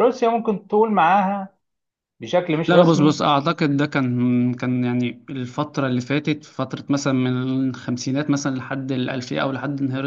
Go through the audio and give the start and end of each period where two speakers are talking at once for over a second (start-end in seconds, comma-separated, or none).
none